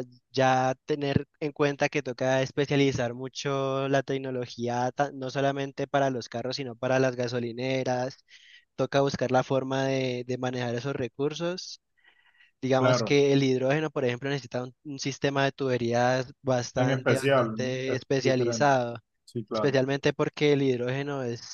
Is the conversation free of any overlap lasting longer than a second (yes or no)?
no